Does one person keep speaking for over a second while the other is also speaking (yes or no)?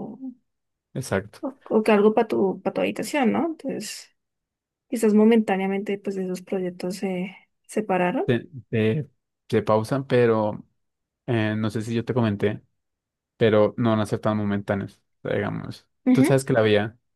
no